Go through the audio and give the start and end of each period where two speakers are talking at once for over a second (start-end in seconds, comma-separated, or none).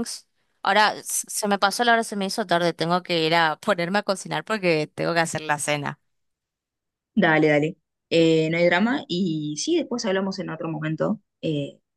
none